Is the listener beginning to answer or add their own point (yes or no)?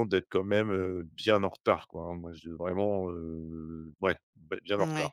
yes